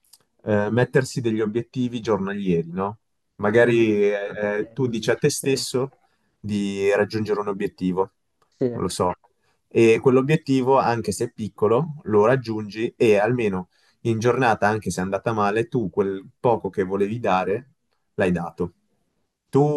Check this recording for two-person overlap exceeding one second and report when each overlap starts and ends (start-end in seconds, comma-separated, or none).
3.7-5.6